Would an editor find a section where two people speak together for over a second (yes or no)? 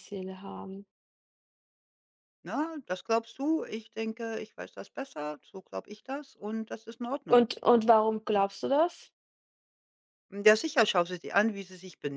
no